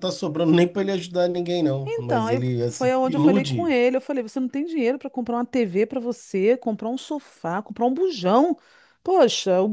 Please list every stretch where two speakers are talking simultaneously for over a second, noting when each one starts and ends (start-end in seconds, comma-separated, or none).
1.9-3.7